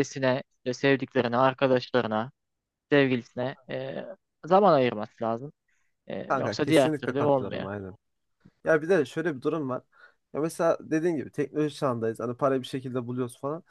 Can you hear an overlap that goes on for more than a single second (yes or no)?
yes